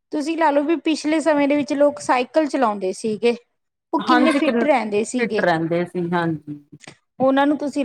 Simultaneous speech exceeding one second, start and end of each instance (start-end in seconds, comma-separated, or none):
4.1-5.4